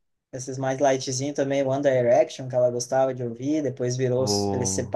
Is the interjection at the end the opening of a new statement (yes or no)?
no